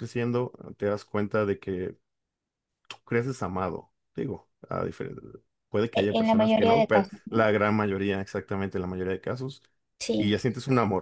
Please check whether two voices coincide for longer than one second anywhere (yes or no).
yes